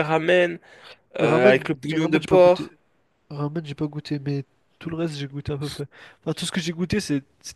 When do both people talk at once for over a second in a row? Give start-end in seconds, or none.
1.2-2.7